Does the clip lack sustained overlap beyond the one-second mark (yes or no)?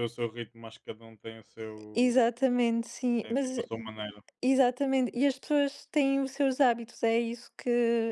yes